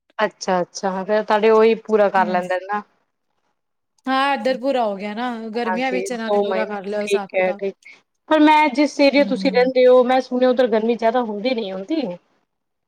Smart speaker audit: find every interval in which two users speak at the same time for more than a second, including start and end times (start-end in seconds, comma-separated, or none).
5.7-7.6